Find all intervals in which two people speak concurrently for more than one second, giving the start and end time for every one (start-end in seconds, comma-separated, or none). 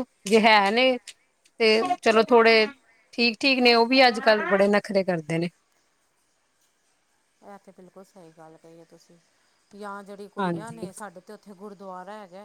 none